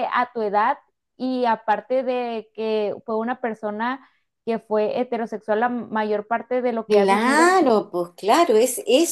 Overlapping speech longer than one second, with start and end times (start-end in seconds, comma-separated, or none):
none